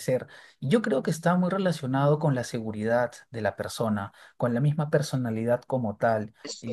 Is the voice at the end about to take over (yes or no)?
no